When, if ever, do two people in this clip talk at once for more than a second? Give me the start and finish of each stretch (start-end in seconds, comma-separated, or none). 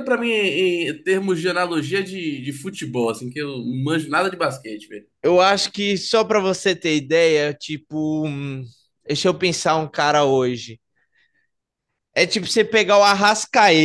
none